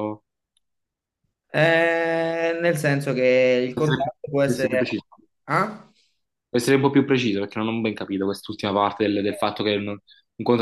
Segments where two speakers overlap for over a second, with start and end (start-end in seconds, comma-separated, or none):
3.7-5.0